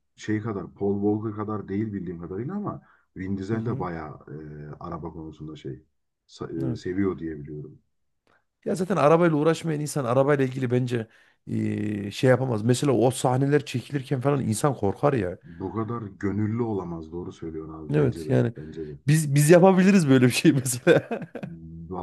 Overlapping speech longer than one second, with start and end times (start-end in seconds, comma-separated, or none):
none